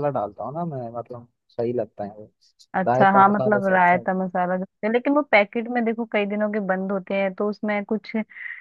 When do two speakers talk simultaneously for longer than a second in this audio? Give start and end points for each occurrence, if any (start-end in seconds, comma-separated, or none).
2.9-4.1